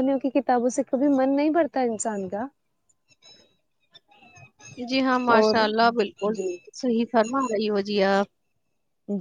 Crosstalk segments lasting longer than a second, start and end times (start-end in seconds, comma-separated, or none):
none